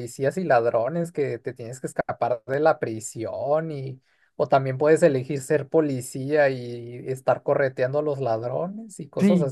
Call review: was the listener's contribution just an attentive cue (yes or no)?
no